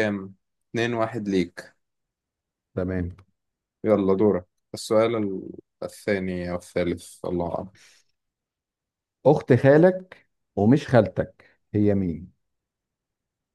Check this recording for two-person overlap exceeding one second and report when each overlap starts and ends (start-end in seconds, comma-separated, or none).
none